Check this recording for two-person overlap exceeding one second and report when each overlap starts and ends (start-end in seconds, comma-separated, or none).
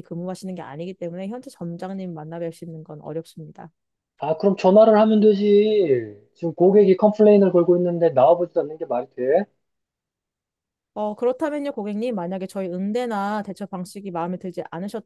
none